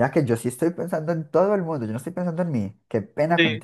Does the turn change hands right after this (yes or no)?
yes